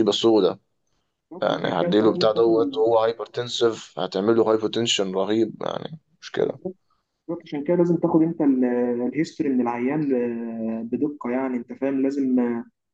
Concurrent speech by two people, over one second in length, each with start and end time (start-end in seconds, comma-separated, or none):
1.4-2.8